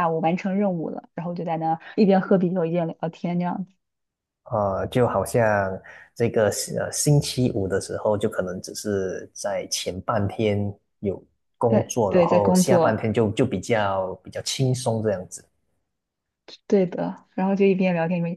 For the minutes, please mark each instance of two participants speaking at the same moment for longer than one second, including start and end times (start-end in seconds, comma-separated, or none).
11.7-13.0